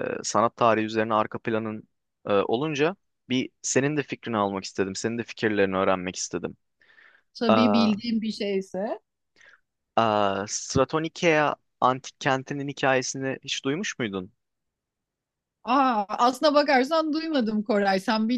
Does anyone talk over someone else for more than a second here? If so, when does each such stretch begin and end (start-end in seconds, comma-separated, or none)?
none